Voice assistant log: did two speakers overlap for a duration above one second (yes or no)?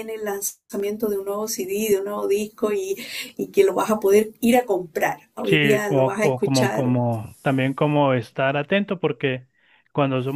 yes